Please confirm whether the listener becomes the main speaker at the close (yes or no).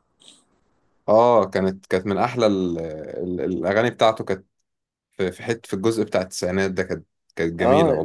yes